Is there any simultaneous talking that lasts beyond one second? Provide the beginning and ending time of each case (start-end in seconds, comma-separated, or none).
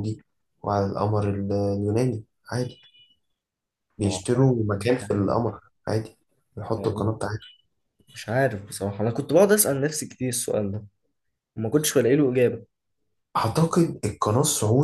4.0-5.3